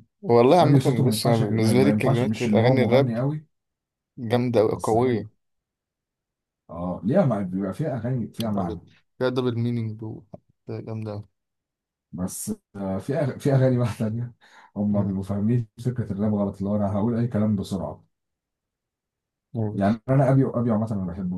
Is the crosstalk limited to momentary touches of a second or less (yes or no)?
no